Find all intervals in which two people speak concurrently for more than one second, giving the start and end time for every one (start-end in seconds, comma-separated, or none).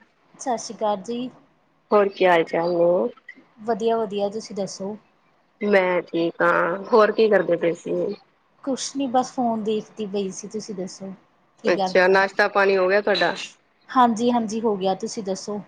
none